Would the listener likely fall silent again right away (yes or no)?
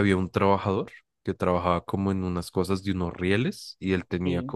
yes